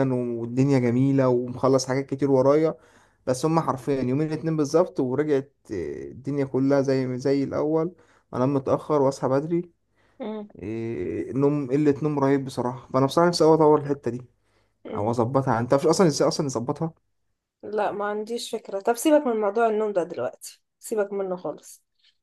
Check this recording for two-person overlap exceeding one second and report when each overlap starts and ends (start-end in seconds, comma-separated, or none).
none